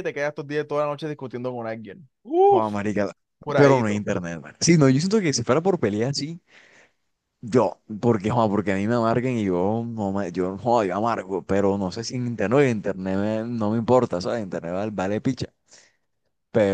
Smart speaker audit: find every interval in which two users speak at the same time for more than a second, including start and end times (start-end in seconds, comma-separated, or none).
none